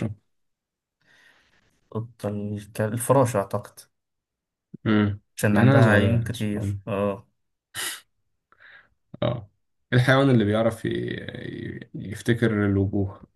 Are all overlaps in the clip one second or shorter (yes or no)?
no